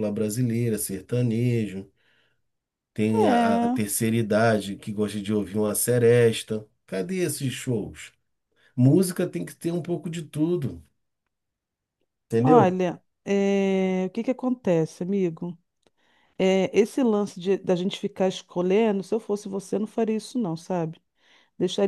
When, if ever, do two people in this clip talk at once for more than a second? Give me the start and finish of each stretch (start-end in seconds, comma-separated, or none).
none